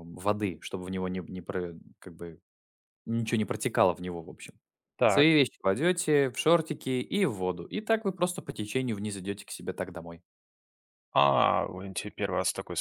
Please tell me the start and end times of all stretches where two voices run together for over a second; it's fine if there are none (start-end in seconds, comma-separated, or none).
none